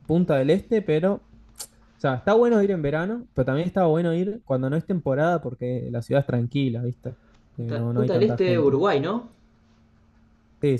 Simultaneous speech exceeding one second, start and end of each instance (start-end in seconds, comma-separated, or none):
7.6-8.8